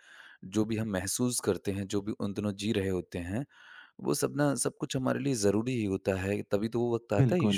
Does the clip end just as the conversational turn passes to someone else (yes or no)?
no